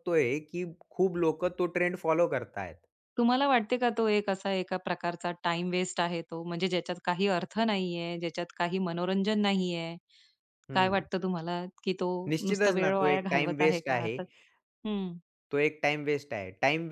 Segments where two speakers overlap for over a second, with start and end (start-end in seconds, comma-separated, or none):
12.5-14.2